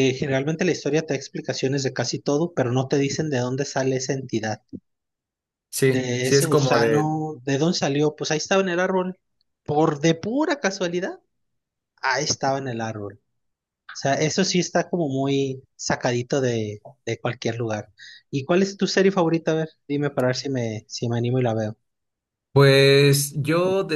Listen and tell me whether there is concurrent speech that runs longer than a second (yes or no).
yes